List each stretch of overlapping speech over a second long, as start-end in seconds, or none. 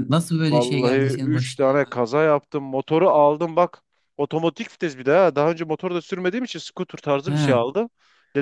0.5-1.9